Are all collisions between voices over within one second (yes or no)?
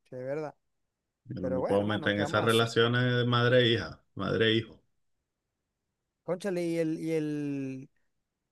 no